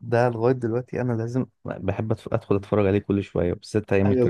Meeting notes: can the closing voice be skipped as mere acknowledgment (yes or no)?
no